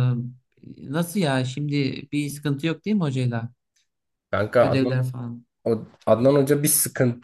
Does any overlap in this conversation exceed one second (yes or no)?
no